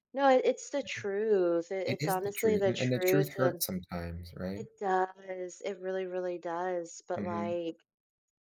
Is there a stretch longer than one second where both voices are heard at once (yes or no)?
yes